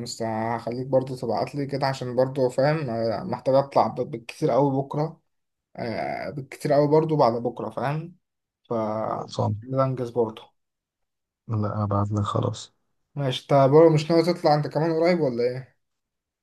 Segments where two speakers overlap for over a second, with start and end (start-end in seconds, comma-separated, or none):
none